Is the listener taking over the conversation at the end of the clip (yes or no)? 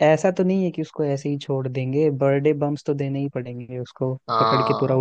yes